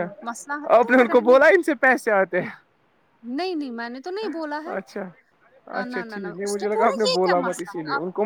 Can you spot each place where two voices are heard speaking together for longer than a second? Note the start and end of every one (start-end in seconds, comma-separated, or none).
5.8-7.7